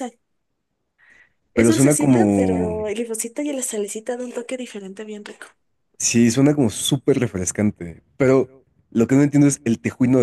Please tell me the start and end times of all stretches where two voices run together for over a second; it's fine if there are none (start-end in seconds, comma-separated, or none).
1.5-2.8